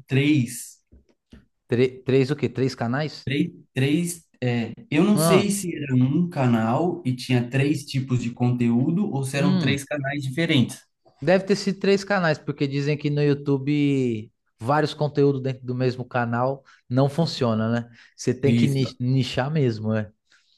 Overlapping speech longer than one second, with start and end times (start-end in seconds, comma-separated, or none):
none